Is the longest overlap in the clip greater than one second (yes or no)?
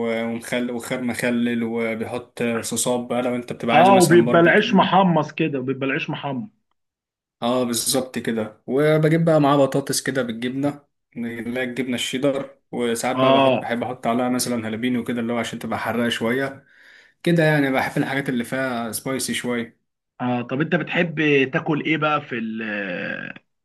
yes